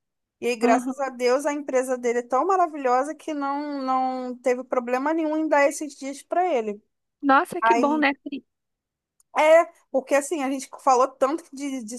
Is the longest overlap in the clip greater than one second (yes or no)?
no